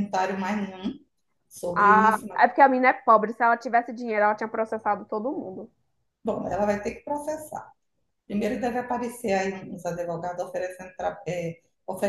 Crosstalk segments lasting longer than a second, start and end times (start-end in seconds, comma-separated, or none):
none